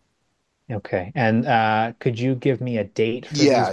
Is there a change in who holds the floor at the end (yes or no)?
yes